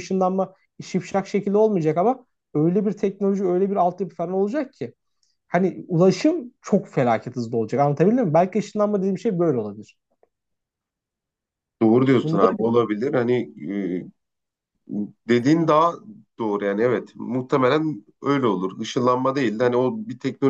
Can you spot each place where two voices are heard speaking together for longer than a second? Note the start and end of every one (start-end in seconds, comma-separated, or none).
none